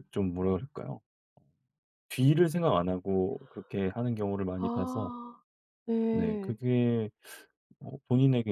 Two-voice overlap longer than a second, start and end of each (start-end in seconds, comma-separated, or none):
none